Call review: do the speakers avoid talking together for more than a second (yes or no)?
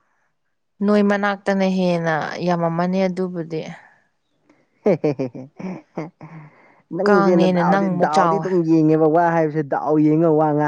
no